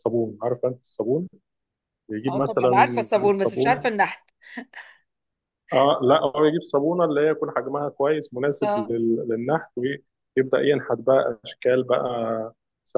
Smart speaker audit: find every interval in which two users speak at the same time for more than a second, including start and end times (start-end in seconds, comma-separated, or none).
2.3-3.9